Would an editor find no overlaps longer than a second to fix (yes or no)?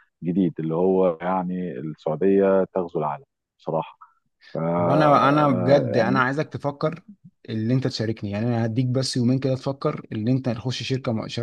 no